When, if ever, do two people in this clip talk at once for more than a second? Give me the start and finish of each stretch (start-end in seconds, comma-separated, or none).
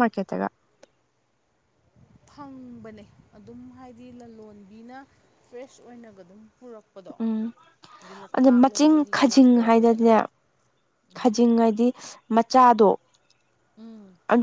8.4-10.2